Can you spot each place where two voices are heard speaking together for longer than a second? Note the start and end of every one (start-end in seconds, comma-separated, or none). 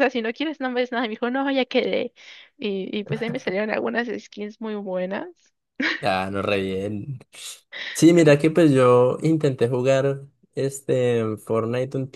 none